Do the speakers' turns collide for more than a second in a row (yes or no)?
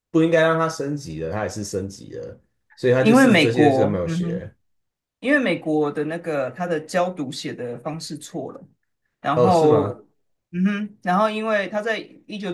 yes